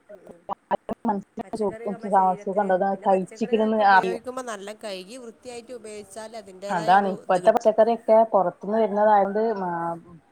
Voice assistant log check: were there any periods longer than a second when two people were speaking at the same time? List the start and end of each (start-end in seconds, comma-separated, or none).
2.4-4.2